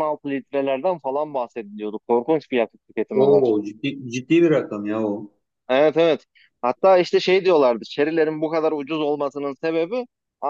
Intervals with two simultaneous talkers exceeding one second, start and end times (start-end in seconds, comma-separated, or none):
none